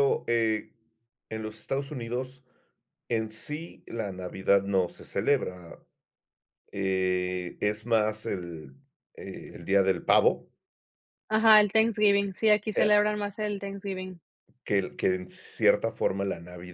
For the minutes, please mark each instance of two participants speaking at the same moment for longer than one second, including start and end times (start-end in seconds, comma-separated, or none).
none